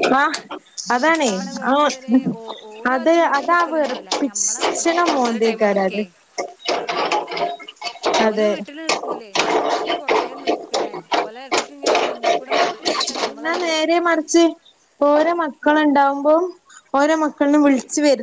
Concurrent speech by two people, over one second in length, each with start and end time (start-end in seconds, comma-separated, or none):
2.9-6.0